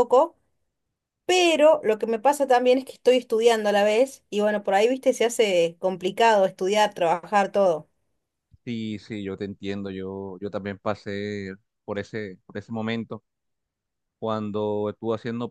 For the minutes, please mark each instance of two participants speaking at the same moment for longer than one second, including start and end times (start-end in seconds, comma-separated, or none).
none